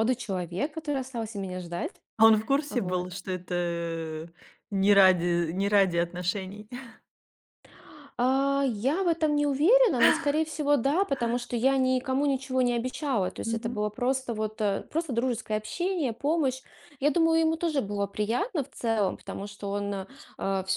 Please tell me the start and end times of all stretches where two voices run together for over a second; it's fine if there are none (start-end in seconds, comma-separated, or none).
none